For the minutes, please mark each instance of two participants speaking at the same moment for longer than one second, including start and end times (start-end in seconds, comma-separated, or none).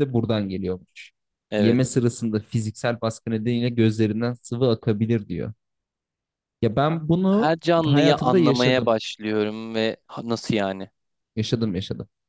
7.3-8.9